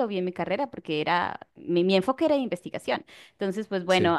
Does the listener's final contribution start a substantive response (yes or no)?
no